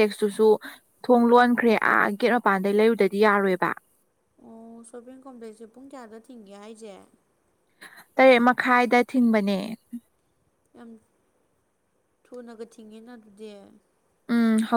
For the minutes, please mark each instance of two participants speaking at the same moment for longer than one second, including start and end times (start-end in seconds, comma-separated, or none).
none